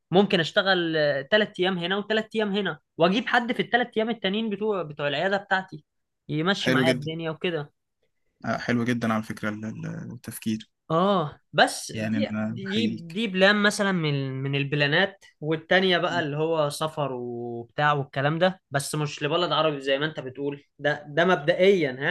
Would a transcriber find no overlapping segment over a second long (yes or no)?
no